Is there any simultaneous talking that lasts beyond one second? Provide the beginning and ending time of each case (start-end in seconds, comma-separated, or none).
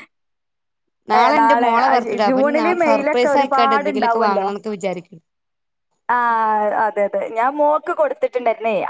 1.4-4.5